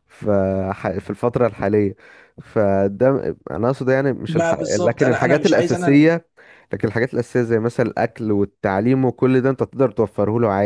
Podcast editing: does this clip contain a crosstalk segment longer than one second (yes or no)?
yes